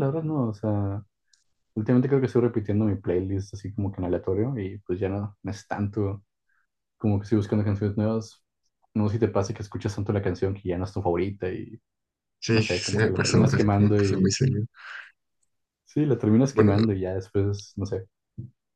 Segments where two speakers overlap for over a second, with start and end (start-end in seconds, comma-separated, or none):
12.5-14.3